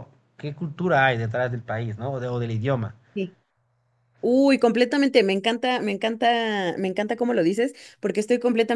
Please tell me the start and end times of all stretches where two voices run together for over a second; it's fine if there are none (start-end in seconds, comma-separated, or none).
none